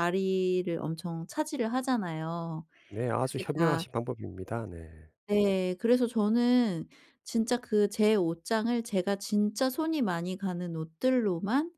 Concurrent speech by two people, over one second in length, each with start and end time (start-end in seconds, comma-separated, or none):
none